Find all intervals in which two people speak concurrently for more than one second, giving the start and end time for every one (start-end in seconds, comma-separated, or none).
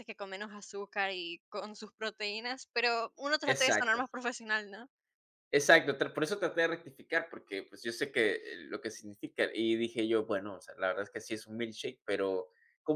none